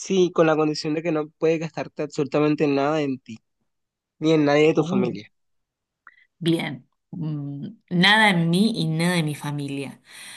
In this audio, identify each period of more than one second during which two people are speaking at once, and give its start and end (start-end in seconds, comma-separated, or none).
none